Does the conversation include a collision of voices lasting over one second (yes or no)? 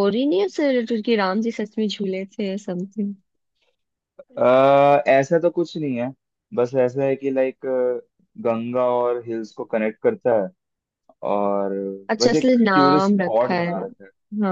yes